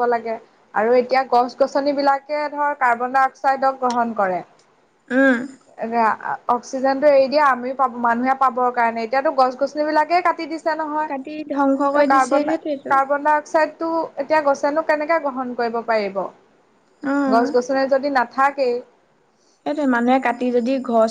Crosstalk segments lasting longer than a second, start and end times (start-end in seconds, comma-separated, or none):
11.1-12.9